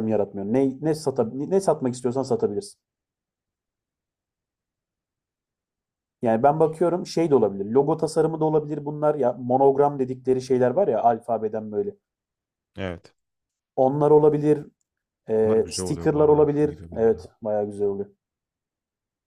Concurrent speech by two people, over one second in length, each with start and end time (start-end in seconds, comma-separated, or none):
15.4-17.2